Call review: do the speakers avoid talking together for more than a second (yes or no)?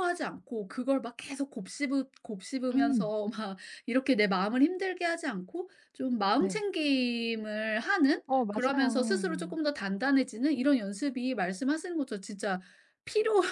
no